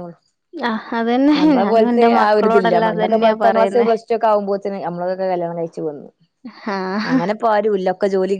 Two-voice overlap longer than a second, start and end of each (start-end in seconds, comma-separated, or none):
1.4-3.9